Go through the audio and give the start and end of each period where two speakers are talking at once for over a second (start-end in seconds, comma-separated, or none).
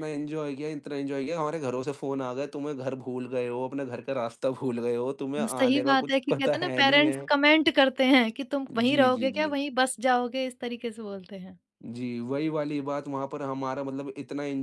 5.4-7.3